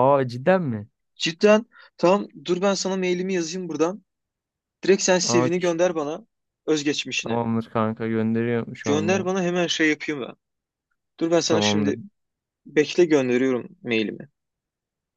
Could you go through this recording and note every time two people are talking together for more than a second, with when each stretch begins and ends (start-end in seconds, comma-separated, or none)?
none